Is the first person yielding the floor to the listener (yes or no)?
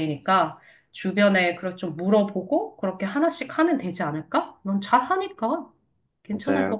yes